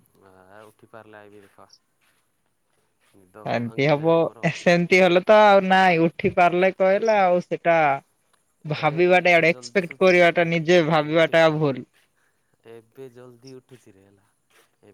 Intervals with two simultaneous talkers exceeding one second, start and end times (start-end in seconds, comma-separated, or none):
8.8-10.4